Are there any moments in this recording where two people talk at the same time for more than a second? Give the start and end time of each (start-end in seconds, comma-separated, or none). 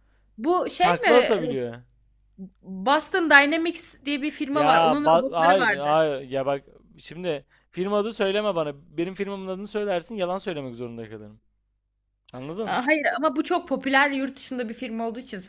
4.5-5.9